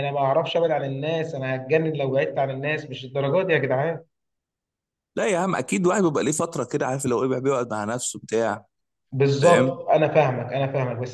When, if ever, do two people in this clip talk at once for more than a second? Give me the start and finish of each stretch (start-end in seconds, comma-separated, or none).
none